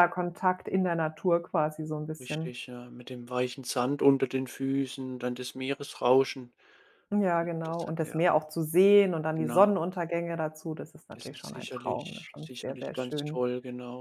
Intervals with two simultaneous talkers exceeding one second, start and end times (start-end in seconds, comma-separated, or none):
11.1-13.4